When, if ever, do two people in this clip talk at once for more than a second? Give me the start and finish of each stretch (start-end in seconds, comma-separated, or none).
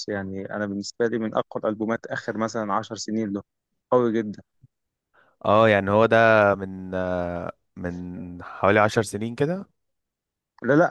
none